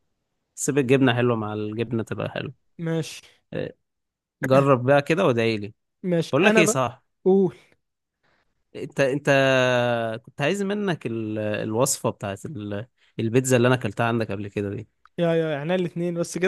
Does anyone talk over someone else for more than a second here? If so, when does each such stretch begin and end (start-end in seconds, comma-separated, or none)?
none